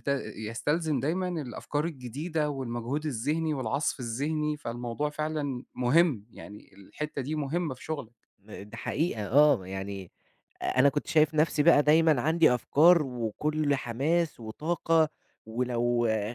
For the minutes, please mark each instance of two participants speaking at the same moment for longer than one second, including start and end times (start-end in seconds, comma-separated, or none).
none